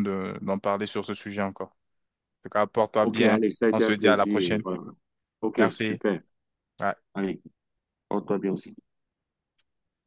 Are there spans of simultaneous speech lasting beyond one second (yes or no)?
yes